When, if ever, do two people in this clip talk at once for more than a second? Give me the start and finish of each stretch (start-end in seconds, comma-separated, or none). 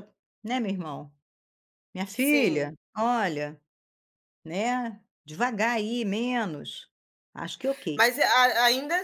none